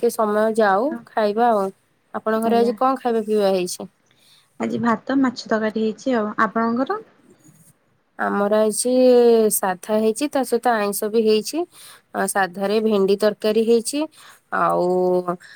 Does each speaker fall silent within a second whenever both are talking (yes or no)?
yes